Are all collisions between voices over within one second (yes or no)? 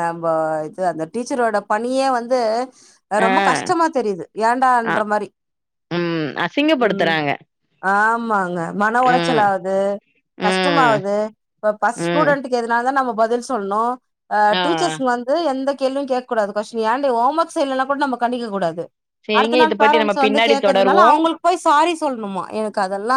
no